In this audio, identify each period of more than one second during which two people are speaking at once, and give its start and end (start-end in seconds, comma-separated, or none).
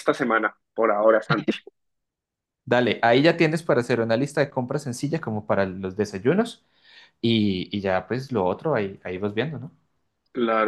none